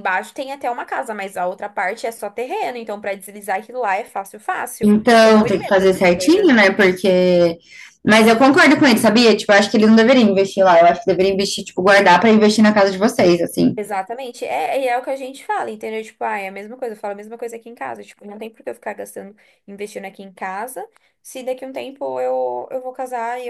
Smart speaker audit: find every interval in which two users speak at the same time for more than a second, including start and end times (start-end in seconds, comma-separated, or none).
4.8-6.5